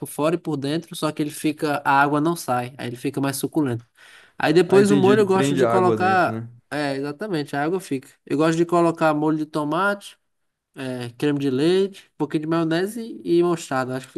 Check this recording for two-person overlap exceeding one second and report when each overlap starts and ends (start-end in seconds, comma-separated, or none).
4.7-6.5